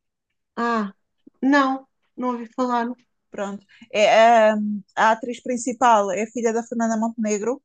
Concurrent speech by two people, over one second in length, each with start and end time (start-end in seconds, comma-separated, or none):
none